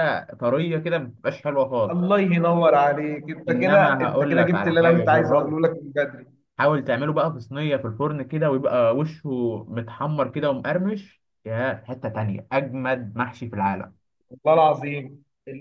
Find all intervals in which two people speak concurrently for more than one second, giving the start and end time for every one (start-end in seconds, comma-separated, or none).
3.5-5.5